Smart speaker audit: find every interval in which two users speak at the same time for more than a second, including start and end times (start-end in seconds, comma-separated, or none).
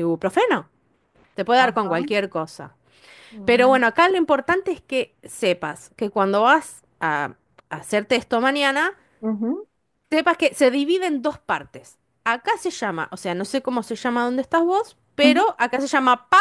none